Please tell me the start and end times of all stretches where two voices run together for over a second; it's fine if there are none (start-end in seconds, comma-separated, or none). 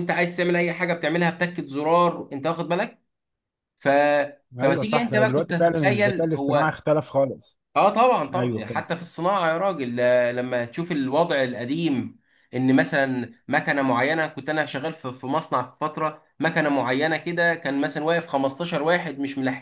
4.6-6.7